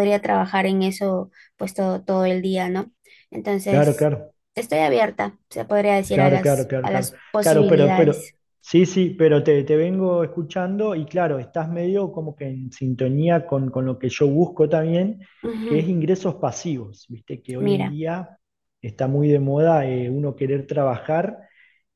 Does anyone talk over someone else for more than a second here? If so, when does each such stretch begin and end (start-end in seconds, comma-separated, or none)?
6.1-8.3